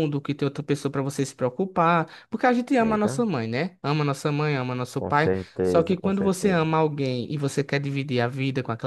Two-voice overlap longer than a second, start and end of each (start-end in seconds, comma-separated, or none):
5.0-6.7